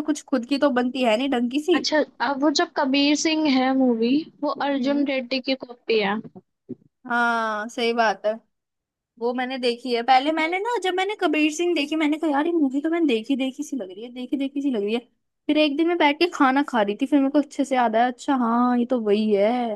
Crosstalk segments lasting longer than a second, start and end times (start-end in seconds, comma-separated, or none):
none